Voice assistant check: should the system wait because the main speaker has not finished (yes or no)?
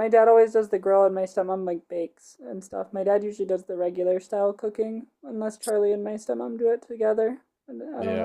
no